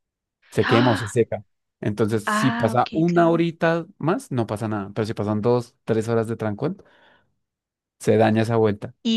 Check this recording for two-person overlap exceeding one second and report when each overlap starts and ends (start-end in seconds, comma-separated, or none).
2.2-3.5